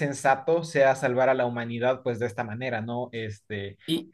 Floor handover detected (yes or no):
yes